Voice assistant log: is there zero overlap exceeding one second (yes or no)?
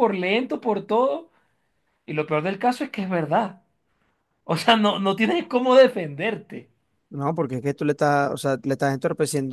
yes